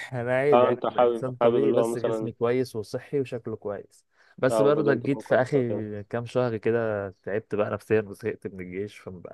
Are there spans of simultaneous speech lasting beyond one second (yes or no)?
yes